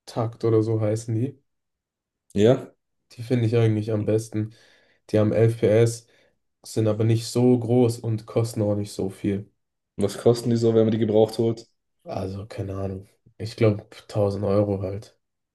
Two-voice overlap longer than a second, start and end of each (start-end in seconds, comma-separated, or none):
none